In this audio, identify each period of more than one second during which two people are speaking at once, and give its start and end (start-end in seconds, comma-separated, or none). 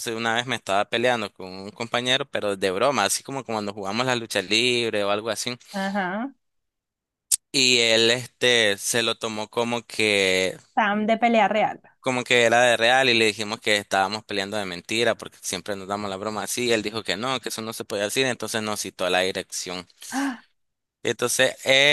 none